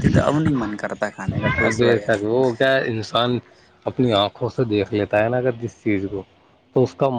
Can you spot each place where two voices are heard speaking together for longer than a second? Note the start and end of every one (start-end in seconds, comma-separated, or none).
none